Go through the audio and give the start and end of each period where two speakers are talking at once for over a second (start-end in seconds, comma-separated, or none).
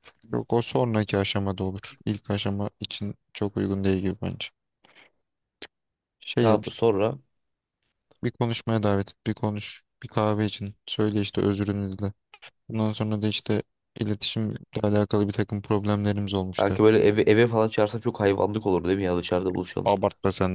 none